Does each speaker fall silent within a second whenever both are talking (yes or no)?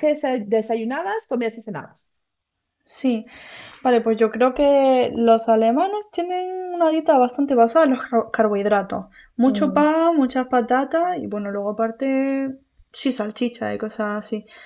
yes